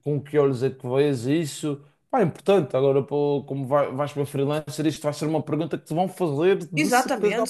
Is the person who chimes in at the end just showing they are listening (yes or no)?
no